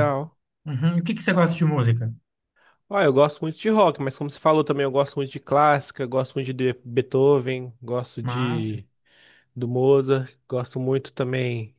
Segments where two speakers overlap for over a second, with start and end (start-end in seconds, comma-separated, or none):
none